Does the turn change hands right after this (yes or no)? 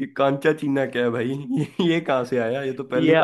yes